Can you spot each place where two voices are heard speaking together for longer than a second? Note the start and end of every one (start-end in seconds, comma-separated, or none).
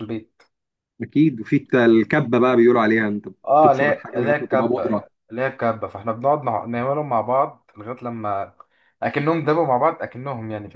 3.4-5.1